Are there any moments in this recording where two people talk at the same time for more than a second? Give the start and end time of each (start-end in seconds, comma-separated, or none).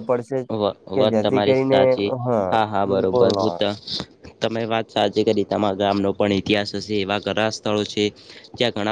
none